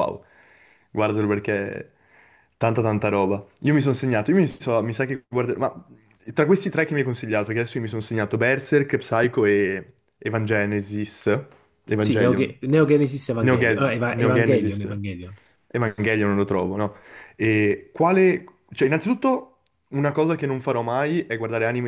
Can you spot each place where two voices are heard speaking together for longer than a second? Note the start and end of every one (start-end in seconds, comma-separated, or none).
13.4-14.8